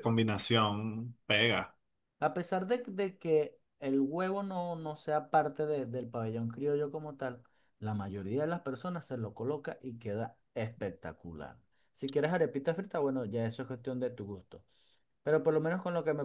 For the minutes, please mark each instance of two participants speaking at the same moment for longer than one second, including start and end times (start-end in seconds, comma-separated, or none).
none